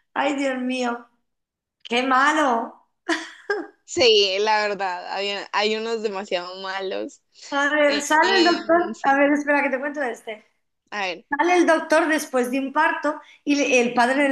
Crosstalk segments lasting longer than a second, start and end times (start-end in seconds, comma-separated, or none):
7.9-9.2